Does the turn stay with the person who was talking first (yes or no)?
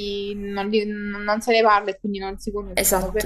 no